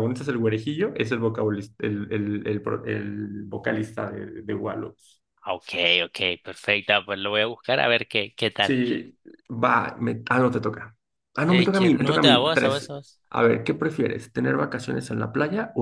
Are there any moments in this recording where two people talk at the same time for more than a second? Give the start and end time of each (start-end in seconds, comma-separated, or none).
11.5-12.9